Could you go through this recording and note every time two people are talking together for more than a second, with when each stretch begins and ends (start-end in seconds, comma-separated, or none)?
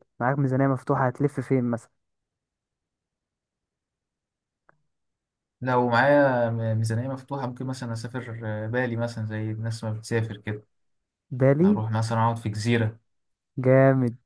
none